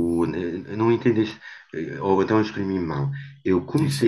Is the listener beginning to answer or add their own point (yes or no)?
no